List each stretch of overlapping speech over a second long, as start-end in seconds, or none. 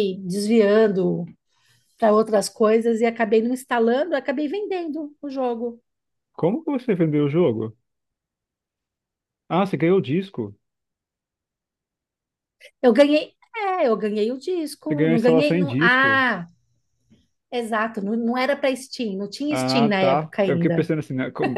14.9-16.2, 19.5-20.9